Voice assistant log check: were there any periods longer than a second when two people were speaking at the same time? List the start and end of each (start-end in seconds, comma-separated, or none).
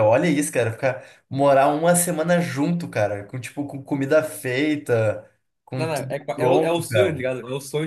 5.7-7.3